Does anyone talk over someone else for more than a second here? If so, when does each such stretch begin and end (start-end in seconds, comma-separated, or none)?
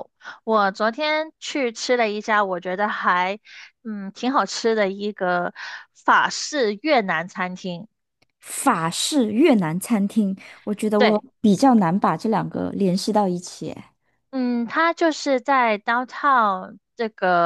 none